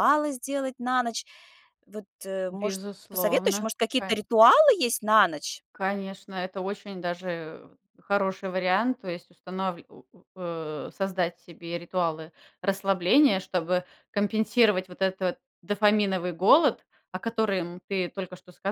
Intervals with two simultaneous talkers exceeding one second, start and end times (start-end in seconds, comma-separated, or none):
2.5-4.1